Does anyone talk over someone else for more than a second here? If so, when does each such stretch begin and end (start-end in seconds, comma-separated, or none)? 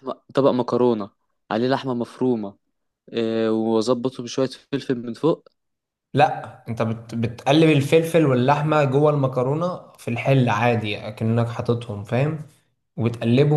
none